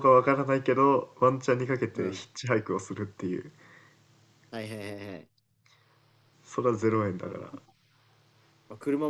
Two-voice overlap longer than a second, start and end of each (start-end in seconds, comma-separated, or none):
none